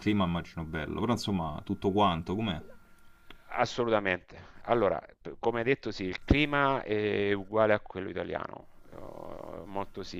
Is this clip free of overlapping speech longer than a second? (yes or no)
yes